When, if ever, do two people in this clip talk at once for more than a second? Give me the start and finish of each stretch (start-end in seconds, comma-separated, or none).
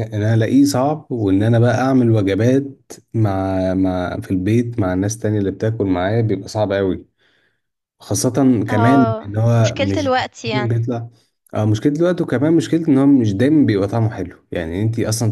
8.7-10.8